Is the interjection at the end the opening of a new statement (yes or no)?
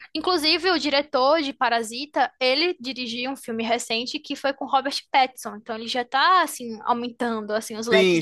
yes